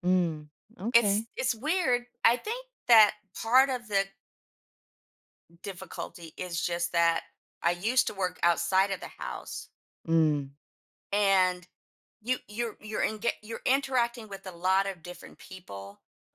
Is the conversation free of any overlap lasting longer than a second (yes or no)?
yes